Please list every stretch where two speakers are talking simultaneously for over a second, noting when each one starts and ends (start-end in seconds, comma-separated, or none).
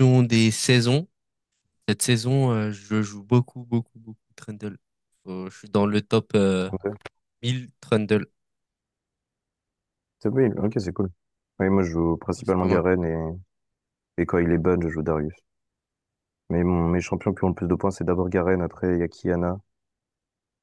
none